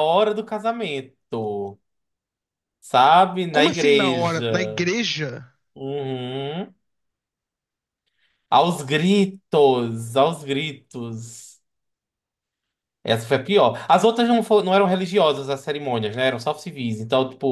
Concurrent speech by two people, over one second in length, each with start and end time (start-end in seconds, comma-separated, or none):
3.5-4.9